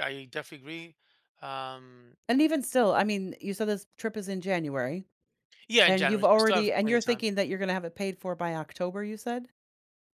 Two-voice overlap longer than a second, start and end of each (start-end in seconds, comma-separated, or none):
5.8-7.2